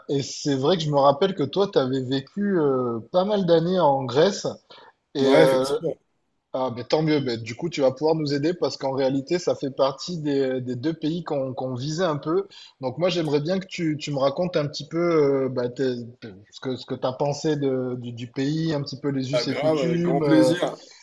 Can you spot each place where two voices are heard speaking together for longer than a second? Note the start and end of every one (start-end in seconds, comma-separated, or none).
19.3-20.5